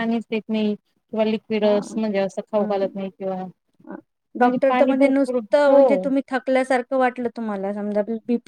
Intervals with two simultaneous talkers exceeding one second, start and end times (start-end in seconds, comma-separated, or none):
4.4-6.1